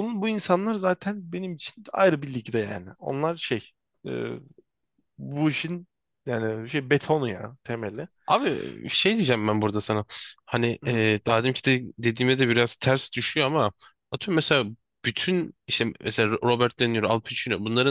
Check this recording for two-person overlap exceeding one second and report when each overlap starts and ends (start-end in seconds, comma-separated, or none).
none